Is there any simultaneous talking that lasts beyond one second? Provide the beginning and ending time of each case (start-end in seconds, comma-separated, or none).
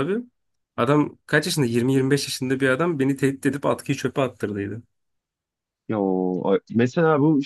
none